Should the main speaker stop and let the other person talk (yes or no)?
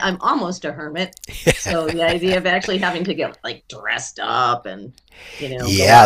yes